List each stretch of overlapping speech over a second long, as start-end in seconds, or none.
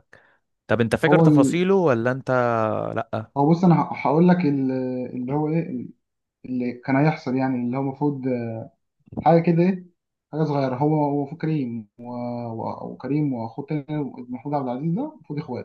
none